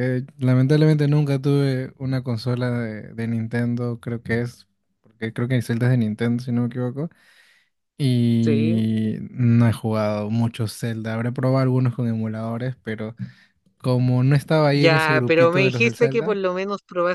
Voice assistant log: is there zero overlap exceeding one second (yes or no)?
no